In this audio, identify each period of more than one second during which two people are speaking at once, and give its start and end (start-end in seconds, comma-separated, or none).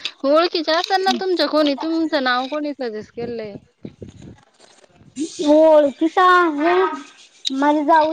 none